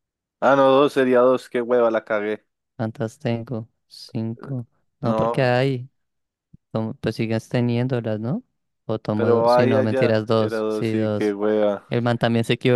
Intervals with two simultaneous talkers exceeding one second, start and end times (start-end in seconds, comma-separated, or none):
9.1-11.4